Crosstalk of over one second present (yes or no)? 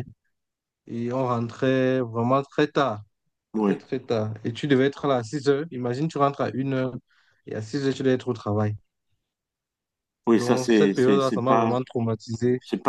yes